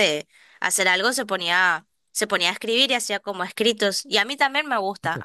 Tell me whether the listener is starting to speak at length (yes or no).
no